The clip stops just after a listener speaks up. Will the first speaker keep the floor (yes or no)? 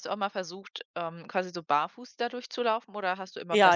no